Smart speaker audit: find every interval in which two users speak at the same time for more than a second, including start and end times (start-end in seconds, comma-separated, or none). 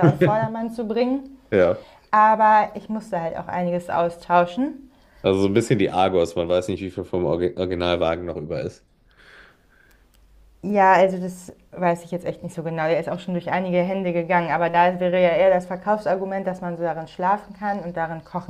none